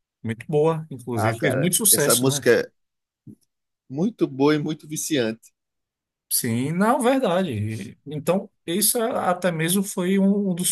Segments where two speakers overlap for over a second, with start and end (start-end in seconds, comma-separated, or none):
1.1-2.5